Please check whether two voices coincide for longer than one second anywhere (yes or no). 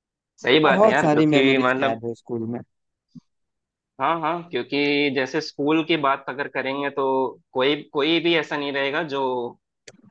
yes